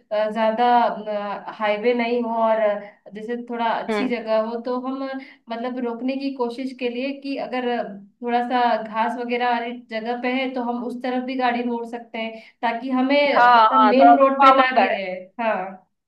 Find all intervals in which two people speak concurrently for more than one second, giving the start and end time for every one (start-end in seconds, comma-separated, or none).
13.4-15.0